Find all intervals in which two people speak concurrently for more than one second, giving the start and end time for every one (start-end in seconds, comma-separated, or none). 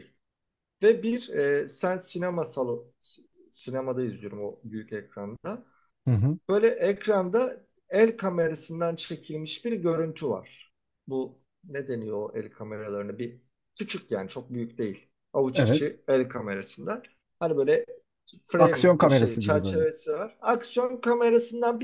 18.6-19.8